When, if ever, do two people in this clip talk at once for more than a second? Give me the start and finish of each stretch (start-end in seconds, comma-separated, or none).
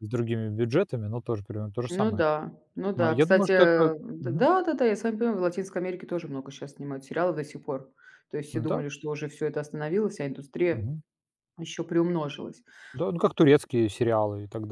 3.0-4.5